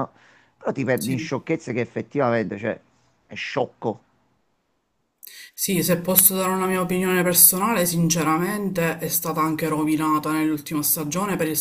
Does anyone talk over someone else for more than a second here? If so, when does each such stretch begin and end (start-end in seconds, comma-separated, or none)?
none